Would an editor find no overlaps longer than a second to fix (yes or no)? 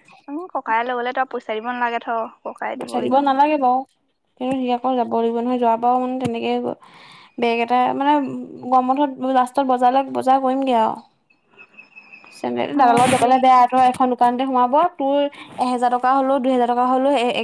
yes